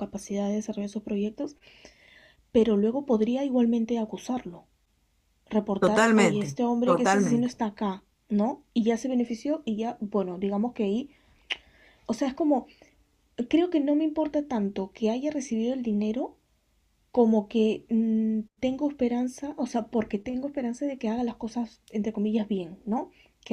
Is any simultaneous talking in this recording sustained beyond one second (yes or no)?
yes